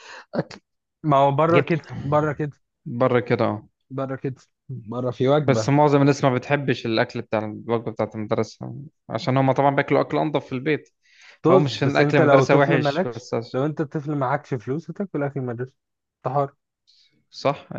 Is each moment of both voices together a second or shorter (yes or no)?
no